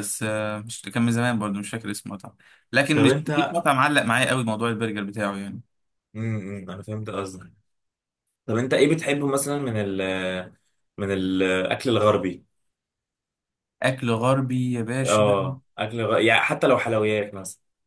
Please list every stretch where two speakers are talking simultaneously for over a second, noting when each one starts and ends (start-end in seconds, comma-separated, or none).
none